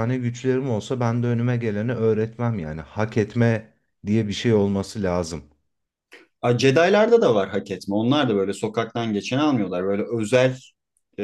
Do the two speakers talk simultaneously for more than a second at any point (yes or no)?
no